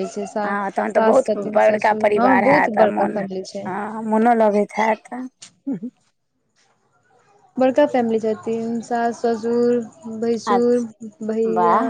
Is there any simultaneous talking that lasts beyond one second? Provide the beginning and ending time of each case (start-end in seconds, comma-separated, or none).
0.9-3.2